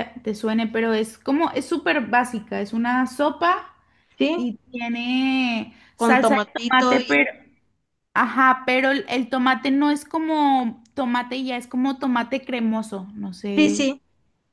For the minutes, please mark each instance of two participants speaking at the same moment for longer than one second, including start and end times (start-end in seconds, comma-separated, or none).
6.0-7.2